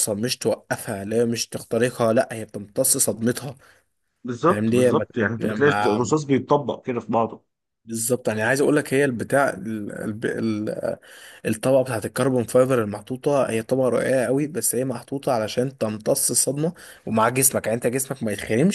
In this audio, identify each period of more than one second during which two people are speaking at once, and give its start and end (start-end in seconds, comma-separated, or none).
4.5-6.1